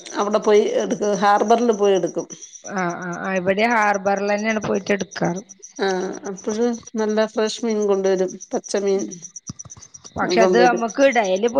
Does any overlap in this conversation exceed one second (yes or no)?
no